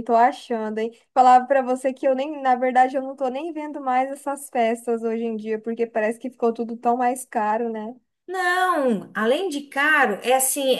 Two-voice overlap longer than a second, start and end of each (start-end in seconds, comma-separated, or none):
none